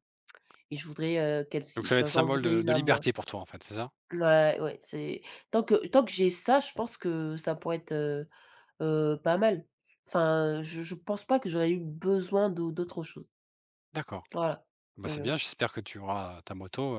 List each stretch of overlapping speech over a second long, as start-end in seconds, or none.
1.8-3.0